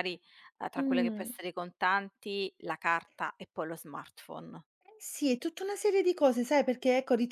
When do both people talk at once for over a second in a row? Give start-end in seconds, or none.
none